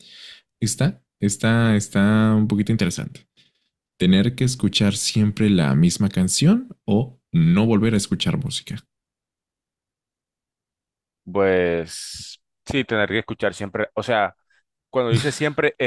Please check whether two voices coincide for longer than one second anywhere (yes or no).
no